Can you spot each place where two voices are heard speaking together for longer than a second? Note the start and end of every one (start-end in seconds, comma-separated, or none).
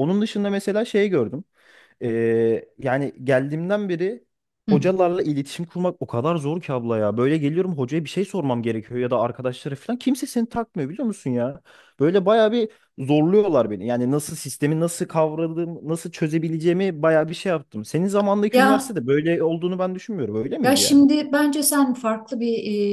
none